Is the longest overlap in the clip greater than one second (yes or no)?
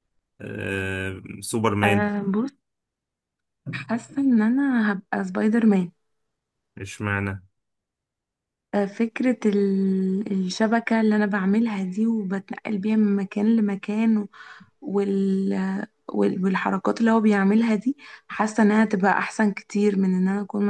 no